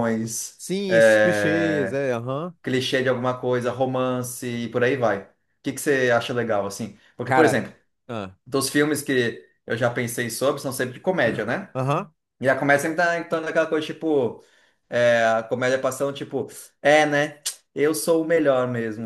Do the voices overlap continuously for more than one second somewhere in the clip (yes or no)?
yes